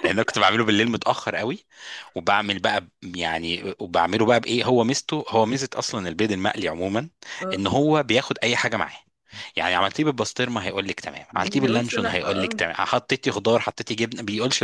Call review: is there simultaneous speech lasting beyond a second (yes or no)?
yes